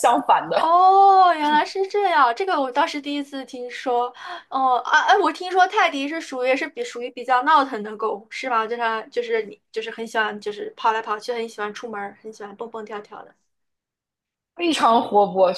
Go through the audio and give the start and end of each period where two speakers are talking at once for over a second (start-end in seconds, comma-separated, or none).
none